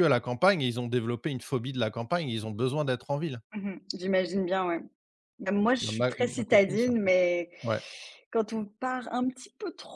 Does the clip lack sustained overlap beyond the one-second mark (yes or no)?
no